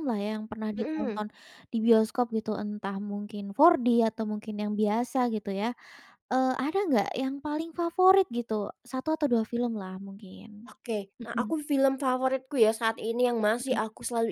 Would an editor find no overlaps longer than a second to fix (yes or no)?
yes